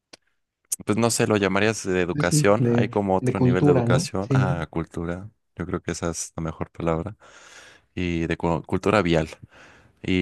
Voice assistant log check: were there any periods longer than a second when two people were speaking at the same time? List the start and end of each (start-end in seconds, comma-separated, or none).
2.1-4.6